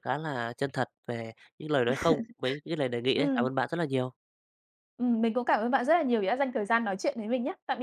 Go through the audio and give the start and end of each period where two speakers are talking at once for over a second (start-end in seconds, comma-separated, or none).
none